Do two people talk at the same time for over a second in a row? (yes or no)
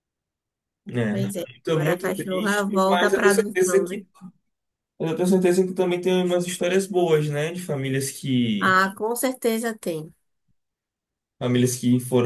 yes